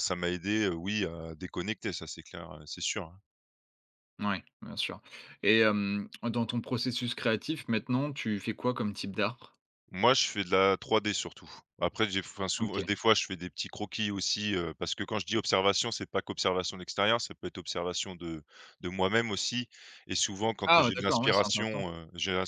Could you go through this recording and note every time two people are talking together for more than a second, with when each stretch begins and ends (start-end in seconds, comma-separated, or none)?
20.6-21.9